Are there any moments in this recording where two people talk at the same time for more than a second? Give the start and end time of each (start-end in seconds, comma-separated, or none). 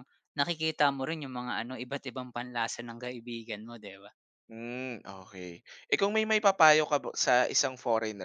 none